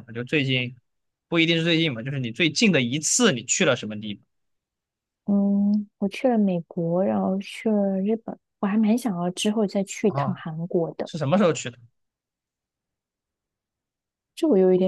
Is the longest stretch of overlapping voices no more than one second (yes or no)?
yes